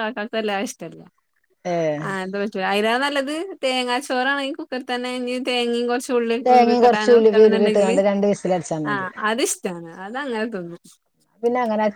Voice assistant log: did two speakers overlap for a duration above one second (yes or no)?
yes